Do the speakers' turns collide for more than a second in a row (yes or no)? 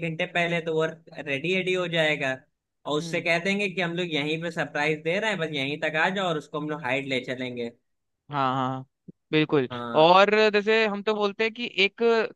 no